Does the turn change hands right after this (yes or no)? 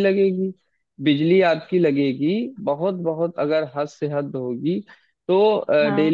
no